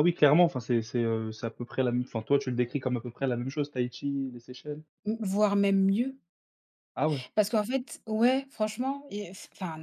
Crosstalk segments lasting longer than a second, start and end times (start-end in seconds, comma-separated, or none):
none